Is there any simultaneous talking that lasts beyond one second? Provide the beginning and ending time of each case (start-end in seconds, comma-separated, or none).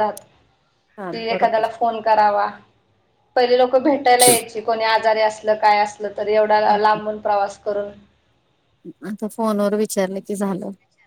none